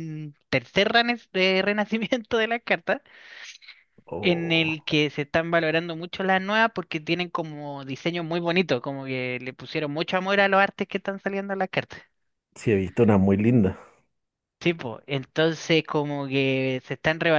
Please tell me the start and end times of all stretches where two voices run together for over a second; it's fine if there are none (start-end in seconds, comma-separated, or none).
none